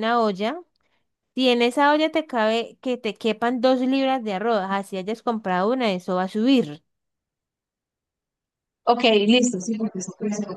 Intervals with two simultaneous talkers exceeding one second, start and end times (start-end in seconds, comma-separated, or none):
none